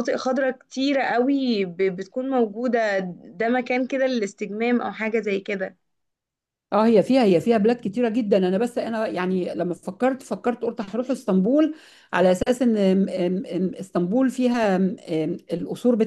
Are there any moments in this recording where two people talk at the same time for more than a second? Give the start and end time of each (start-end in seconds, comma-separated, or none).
none